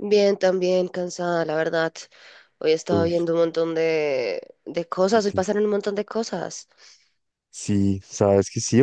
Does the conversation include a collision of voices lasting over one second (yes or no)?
no